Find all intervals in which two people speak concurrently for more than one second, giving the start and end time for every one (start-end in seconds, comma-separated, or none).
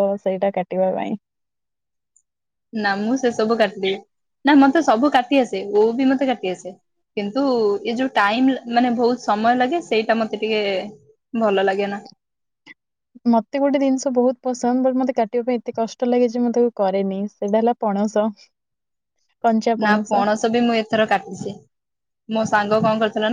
none